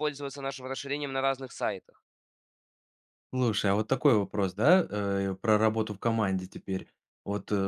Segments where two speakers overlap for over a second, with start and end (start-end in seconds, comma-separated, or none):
none